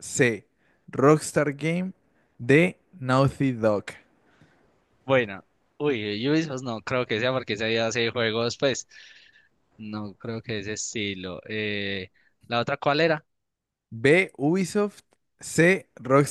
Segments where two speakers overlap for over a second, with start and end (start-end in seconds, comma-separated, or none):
none